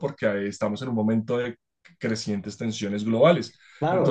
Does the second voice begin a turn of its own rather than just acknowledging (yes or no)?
yes